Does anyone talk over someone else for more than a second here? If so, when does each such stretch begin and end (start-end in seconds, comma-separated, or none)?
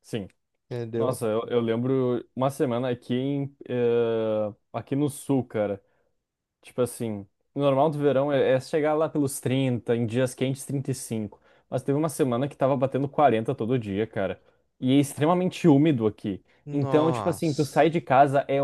16.6-17.9